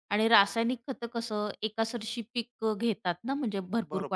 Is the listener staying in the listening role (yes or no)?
no